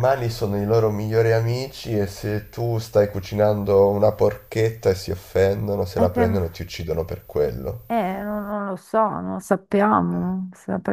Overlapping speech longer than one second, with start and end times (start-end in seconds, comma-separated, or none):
none